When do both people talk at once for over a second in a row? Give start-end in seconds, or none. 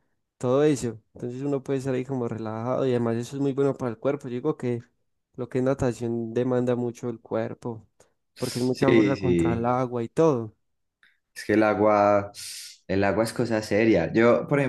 8.4-9.7